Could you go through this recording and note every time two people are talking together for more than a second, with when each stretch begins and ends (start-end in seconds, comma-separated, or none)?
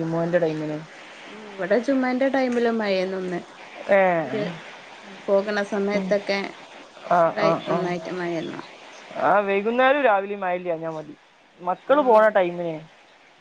none